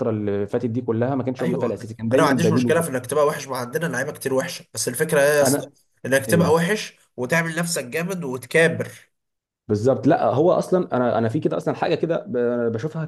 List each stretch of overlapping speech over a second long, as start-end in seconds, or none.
1.4-2.9